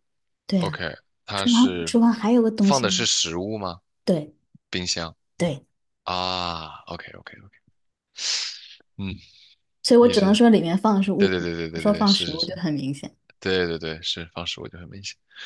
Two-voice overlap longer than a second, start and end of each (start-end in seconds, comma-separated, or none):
11.2-12.5